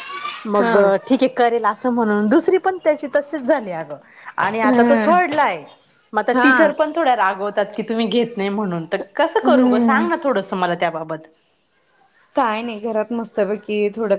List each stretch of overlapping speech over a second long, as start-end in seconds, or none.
none